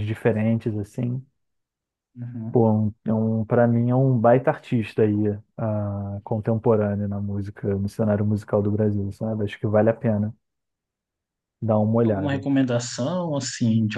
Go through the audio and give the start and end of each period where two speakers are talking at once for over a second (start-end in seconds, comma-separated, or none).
none